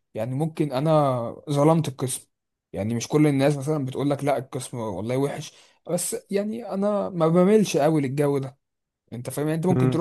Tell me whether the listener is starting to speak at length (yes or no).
no